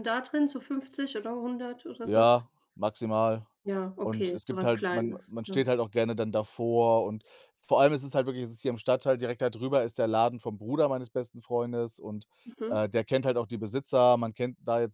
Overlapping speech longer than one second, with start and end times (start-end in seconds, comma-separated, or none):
4.0-5.7